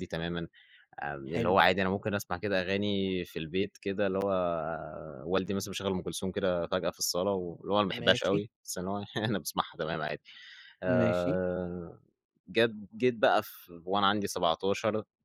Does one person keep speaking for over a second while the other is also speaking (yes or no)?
no